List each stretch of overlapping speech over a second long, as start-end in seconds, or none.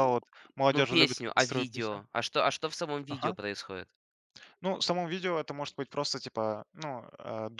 0.7-2.0